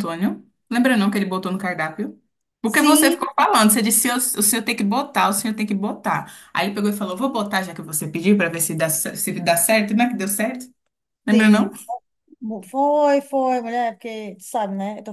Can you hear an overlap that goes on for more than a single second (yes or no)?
no